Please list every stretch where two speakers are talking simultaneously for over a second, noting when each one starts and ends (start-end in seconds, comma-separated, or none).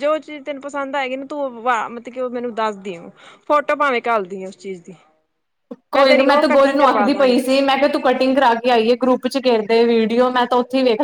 6.0-7.4